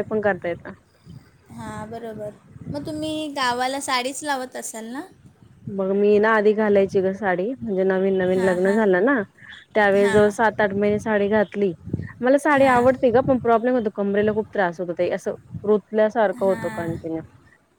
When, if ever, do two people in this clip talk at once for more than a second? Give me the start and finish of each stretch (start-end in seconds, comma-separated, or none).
none